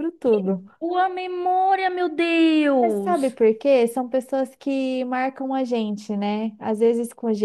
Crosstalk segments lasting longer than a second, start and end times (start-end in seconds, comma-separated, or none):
none